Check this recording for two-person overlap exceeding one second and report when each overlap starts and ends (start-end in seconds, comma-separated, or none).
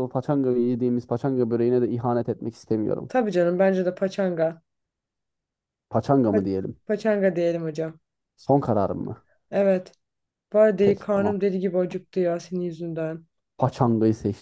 none